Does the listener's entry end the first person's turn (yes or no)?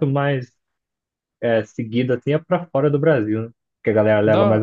yes